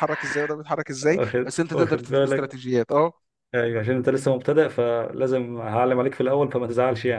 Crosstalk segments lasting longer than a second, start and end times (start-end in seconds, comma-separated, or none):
1.0-2.6